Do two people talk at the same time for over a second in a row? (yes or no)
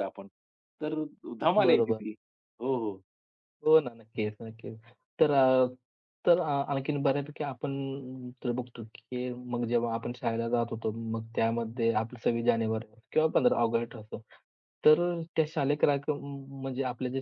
no